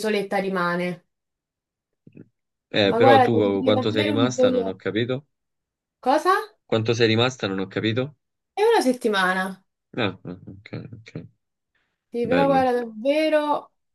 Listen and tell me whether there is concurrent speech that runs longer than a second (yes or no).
yes